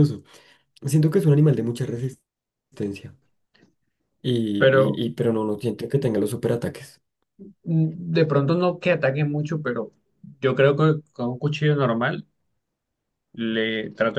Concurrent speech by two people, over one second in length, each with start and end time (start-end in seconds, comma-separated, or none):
none